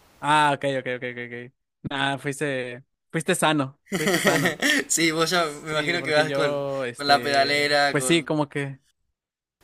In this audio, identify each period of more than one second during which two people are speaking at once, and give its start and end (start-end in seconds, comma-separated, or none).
5.3-8.4